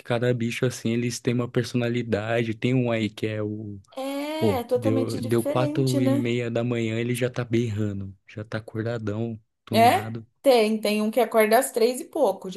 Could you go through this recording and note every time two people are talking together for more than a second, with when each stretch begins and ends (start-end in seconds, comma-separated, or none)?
4.4-6.2